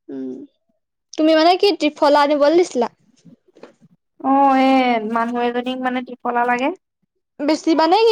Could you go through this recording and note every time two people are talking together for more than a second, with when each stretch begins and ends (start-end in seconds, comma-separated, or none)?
none